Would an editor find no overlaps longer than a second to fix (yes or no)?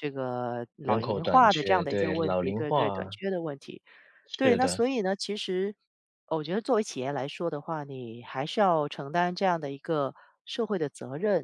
no